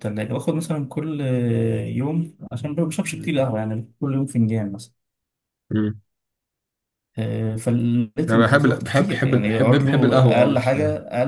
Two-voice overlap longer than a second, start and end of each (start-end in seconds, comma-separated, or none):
8.3-10.8